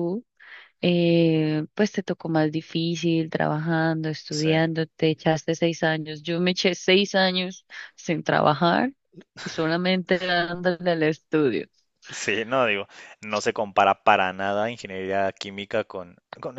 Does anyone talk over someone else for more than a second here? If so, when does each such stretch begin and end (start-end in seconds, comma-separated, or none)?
none